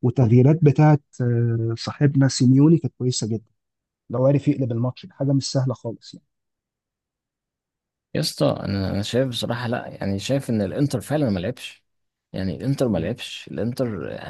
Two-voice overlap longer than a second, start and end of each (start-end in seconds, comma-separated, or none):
none